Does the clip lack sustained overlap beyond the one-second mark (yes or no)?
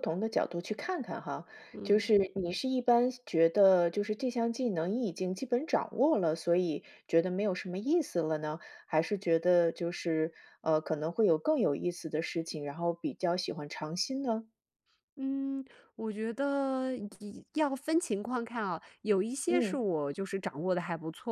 yes